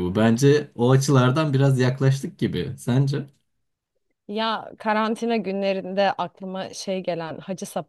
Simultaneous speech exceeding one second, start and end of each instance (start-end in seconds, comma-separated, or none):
none